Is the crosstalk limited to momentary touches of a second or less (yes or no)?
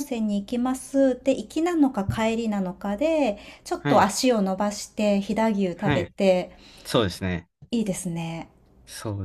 yes